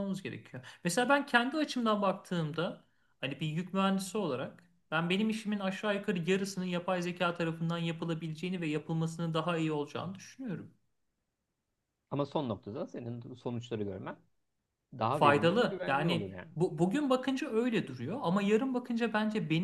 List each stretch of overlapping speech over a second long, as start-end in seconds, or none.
15.1-16.5